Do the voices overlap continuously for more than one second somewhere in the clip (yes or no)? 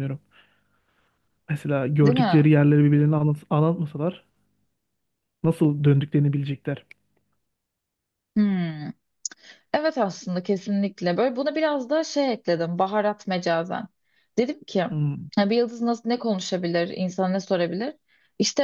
no